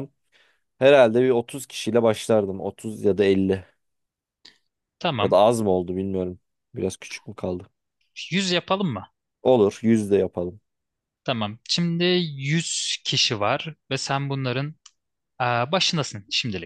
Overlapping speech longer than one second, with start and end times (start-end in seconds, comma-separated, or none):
none